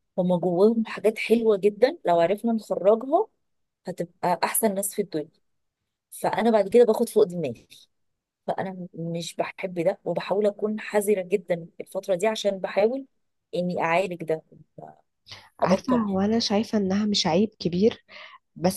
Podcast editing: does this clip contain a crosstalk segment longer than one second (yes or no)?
no